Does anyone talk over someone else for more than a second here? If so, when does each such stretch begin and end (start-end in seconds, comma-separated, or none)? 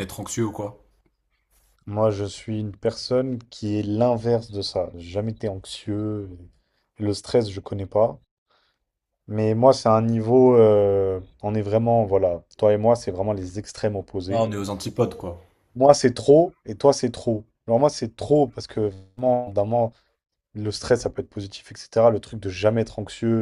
none